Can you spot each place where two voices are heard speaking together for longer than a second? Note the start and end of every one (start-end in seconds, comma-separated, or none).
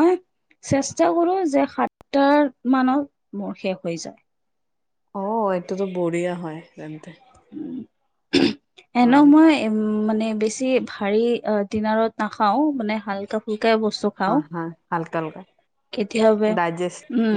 none